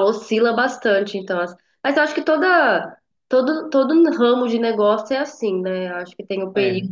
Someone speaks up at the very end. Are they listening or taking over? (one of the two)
listening